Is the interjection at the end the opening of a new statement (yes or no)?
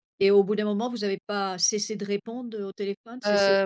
yes